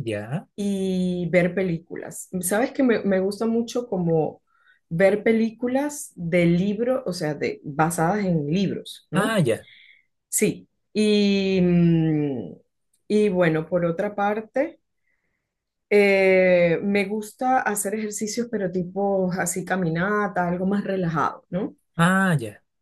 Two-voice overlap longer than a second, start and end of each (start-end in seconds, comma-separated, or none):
none